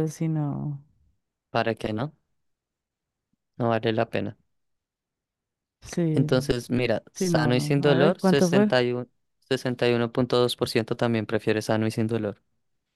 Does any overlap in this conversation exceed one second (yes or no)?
yes